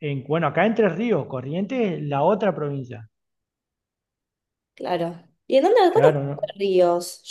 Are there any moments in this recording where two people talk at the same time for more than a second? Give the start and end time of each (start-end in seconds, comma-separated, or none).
none